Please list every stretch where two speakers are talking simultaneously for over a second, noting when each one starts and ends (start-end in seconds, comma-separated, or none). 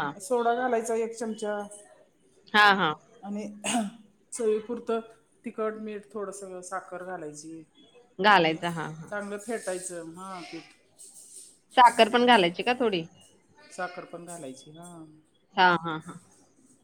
none